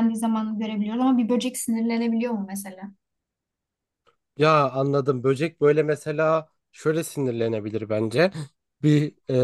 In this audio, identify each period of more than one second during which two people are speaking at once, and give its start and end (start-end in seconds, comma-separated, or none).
none